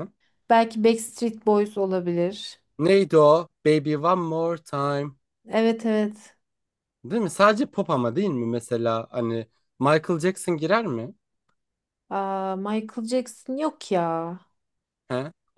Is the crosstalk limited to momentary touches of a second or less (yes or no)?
yes